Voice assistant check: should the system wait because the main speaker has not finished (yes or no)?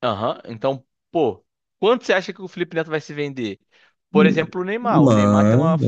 yes